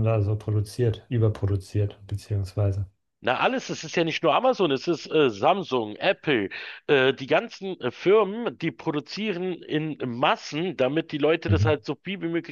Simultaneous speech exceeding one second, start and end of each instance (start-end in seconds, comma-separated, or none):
none